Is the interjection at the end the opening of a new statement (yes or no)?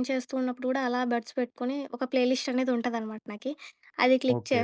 no